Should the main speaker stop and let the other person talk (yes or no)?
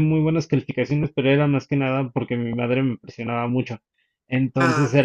no